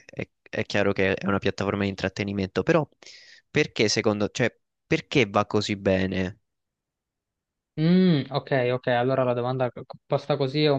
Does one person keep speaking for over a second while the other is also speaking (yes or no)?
no